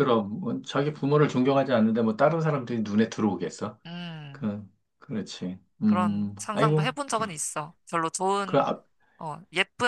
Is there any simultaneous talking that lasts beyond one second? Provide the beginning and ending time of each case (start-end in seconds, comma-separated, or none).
5.8-7.2